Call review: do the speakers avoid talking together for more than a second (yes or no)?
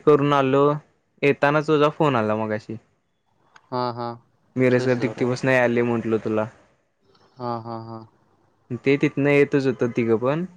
yes